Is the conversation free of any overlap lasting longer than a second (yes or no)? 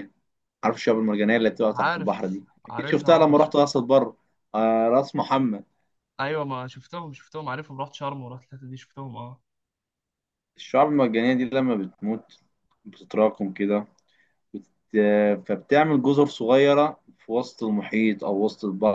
no